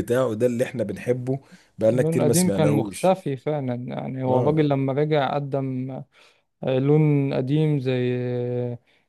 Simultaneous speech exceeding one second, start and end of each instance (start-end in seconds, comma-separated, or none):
1.9-3.2